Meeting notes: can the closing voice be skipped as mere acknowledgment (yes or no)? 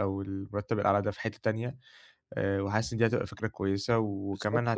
yes